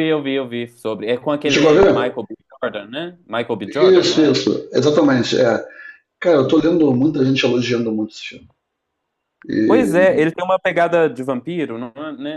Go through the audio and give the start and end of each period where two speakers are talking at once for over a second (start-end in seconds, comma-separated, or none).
none